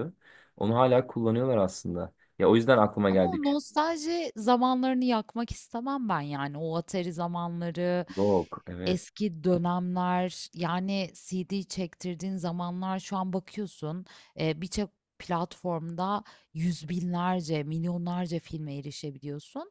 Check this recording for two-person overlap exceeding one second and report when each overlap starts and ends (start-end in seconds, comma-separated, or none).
none